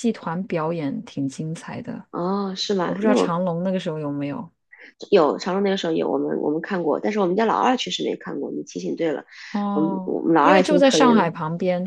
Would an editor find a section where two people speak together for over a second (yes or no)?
yes